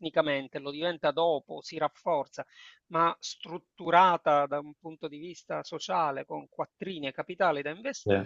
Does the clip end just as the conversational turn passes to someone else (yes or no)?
no